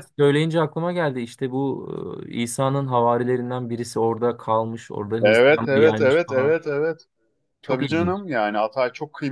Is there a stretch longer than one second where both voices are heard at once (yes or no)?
yes